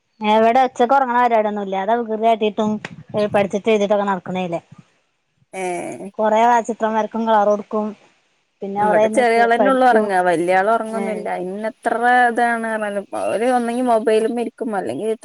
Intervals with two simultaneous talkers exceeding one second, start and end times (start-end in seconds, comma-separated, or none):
none